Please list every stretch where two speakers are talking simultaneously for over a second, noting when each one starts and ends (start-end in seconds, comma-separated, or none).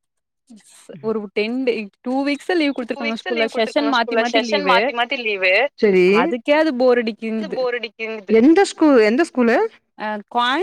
3.0-4.8